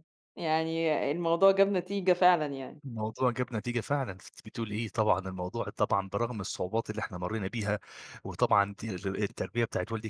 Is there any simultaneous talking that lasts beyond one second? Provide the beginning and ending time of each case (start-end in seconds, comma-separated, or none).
none